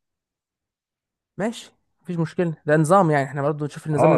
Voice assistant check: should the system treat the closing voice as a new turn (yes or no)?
yes